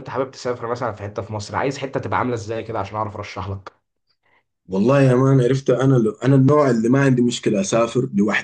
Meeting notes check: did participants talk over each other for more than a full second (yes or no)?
no